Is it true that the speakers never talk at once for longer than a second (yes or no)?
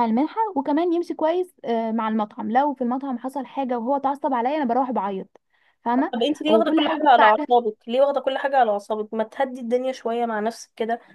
no